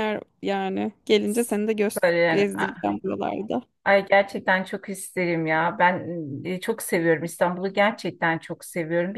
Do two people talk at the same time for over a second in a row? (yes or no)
no